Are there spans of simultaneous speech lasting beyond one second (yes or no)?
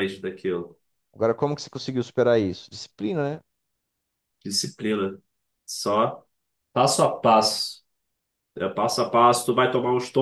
no